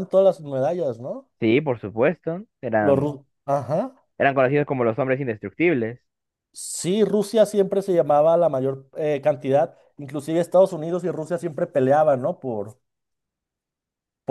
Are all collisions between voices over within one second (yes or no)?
yes